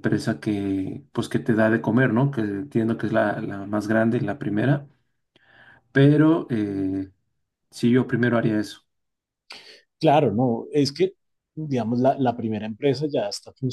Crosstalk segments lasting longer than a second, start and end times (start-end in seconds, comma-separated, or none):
none